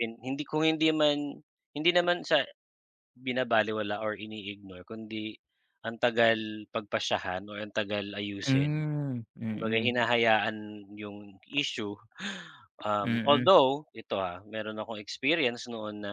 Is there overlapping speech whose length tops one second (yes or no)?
no